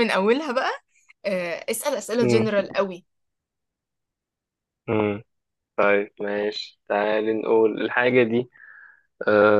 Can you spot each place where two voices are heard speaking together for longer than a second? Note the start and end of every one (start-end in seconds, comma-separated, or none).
none